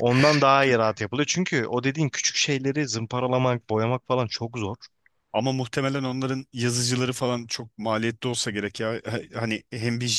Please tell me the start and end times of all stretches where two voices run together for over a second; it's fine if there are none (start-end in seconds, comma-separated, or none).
none